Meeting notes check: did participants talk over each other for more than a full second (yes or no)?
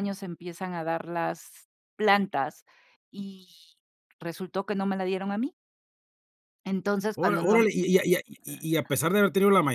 no